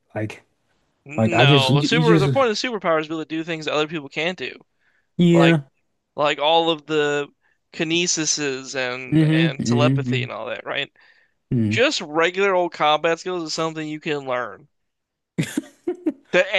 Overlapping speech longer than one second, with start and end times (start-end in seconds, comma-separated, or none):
1.2-2.5, 9.1-10.3